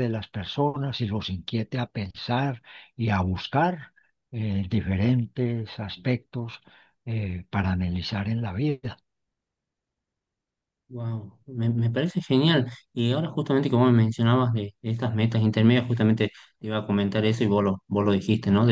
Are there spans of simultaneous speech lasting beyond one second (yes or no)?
no